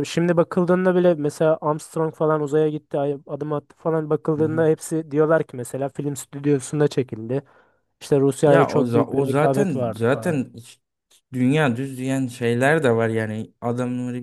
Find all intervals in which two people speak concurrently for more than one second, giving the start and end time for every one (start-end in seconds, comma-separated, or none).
8.4-10.4